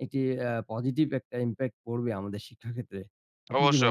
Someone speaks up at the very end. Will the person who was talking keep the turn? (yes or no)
no